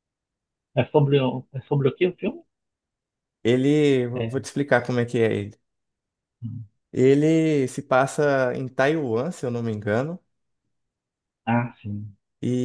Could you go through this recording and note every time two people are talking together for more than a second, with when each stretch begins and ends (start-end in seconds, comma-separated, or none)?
none